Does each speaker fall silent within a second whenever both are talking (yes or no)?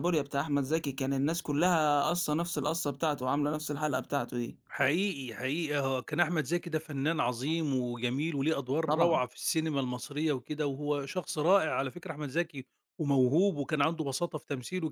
yes